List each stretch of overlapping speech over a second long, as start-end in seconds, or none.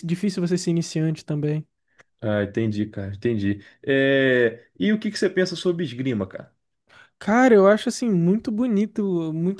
none